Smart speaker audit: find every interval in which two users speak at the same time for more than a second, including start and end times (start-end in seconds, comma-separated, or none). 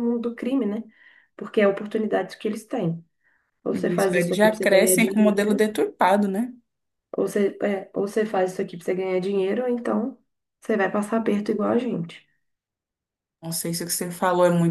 3.7-5.7